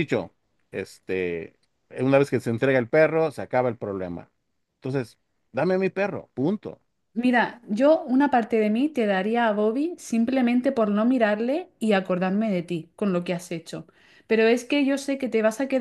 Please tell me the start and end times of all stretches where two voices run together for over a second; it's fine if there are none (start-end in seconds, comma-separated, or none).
none